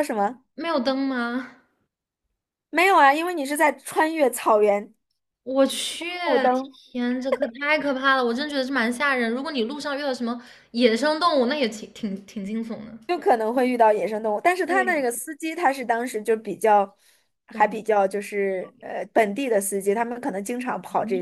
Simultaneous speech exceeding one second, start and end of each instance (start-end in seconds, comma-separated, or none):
none